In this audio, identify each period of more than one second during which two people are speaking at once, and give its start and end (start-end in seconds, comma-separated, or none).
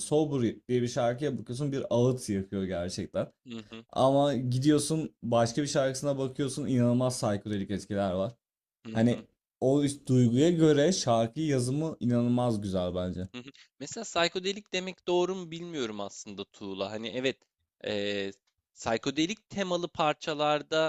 none